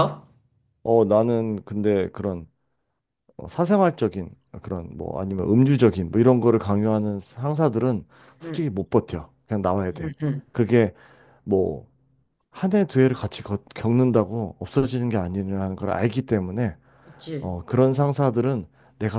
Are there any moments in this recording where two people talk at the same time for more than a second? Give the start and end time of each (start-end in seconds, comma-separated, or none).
none